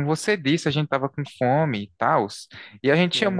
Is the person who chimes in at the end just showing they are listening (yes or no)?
no